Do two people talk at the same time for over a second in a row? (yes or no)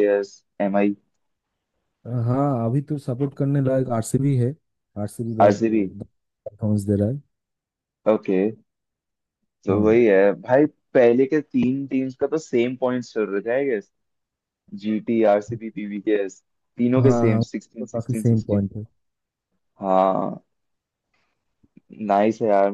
yes